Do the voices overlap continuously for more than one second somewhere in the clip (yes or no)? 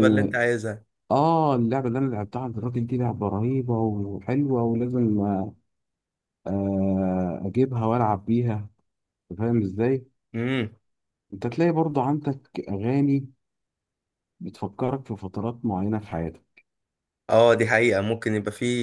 no